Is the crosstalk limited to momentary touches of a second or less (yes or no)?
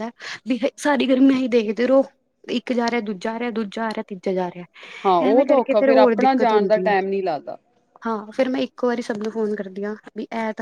no